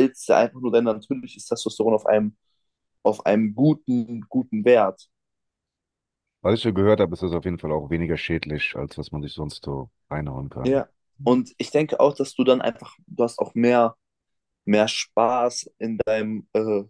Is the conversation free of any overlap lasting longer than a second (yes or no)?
yes